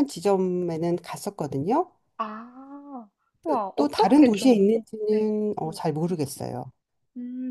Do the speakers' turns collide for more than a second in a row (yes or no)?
yes